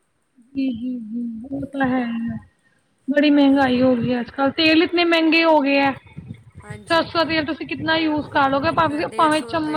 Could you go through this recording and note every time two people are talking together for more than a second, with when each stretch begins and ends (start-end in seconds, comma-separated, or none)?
none